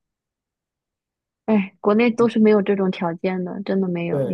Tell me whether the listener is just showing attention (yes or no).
no